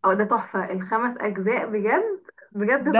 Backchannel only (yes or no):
no